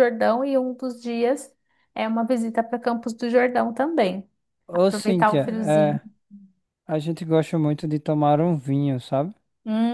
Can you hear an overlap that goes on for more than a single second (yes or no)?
yes